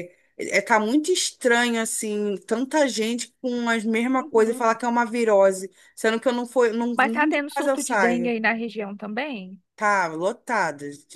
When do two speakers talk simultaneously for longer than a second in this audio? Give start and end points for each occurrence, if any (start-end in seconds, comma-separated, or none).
6.9-8.3